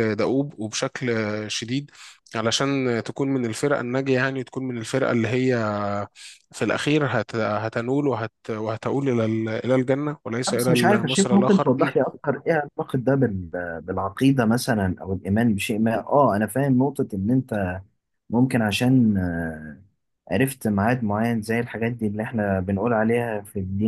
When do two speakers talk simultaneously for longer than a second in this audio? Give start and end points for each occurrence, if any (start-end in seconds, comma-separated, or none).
10.6-11.9